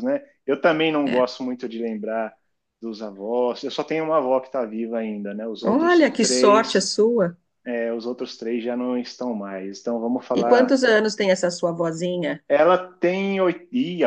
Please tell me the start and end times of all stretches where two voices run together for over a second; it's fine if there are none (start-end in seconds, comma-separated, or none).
5.7-6.9